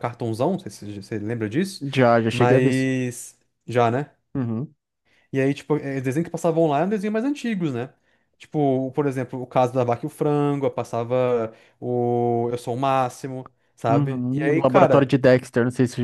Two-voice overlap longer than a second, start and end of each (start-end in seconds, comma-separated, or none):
13.9-15.2